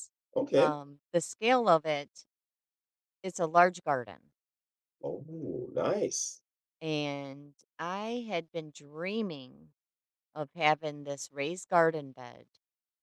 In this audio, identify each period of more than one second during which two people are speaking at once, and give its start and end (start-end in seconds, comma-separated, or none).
none